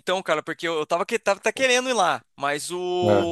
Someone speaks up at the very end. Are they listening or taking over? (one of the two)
listening